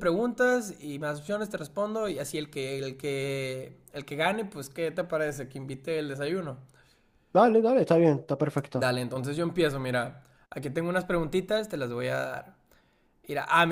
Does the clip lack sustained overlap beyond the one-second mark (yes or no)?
yes